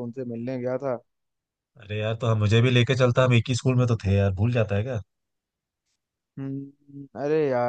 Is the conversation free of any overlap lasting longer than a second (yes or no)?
yes